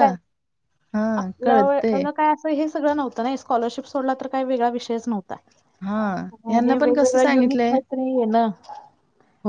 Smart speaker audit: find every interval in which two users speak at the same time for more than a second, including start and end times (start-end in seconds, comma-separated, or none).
6.5-7.8